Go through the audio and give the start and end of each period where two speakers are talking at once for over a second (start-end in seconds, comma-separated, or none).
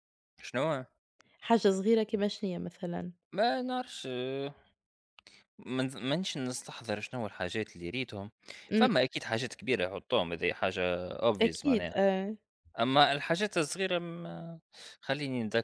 none